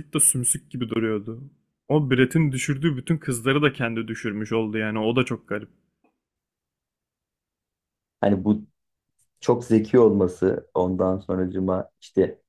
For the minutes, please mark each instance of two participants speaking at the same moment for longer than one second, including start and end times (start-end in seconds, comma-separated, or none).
none